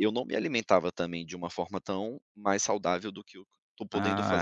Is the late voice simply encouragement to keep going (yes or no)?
no